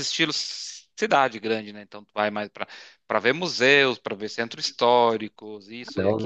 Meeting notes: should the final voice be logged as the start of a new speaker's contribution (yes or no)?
yes